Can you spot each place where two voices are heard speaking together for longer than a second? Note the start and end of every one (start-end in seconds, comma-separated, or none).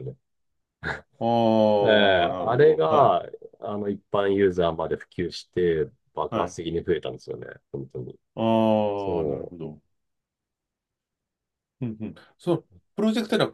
1.8-3.2